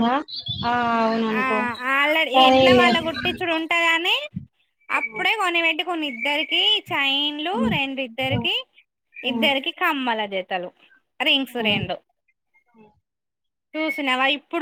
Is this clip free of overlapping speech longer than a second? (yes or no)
yes